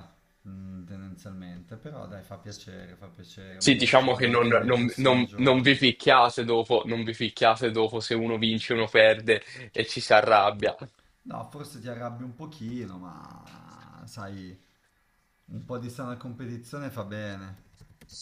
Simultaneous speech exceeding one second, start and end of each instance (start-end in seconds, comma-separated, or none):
3.6-5.8